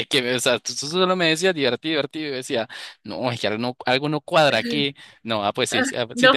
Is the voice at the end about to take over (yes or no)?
yes